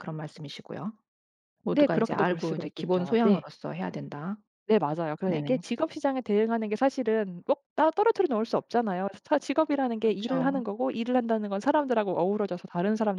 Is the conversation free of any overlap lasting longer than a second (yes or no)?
no